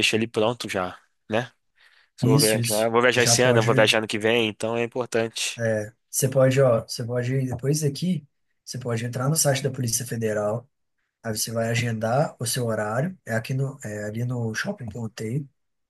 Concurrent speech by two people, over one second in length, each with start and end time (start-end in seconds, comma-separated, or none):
2.2-4.0